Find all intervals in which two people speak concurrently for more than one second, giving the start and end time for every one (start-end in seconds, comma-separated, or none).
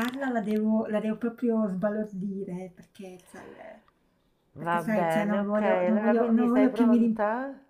4.5-7.2